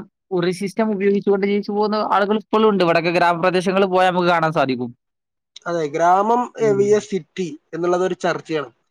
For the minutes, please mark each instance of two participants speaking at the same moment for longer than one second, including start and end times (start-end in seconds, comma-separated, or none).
none